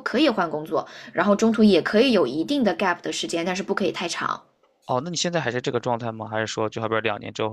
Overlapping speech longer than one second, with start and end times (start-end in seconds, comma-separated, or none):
none